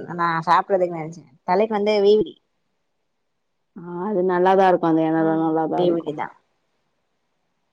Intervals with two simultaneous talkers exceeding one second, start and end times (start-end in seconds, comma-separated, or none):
none